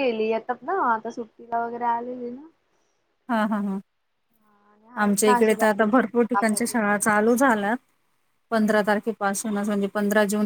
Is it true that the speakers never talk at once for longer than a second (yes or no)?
no